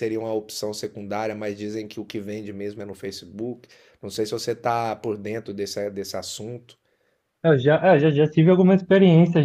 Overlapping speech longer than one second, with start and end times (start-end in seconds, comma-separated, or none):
none